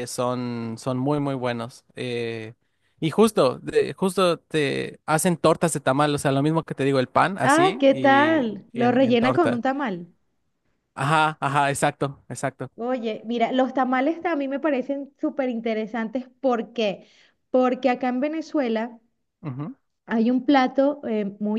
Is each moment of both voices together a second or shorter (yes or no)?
no